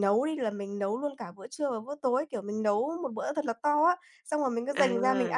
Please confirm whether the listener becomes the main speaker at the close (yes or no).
no